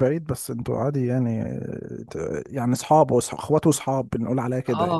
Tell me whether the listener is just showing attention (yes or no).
no